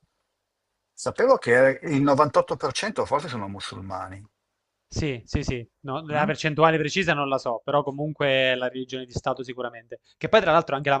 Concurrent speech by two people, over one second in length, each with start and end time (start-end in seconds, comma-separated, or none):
none